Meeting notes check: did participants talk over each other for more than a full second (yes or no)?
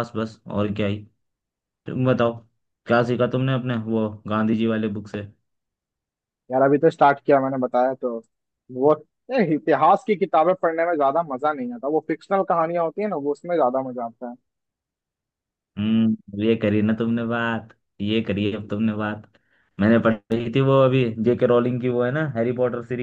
no